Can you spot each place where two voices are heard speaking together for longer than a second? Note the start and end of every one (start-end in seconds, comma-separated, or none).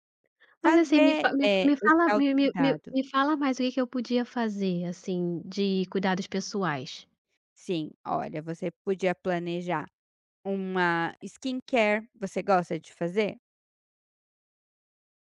0.6-2.9